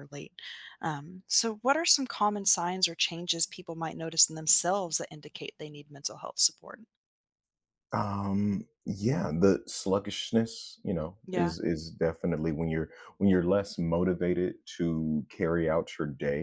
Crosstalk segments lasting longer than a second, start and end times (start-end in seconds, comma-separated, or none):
none